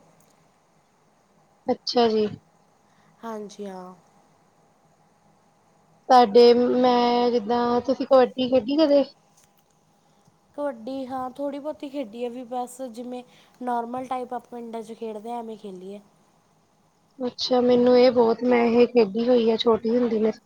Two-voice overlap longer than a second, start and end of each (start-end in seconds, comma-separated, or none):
none